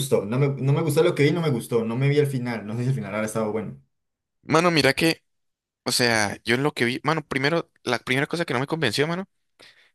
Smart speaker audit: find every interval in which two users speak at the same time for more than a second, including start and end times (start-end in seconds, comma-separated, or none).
none